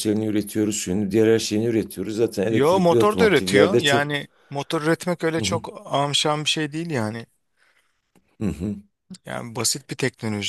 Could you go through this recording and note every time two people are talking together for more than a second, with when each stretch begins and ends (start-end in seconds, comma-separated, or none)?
2.5-4.1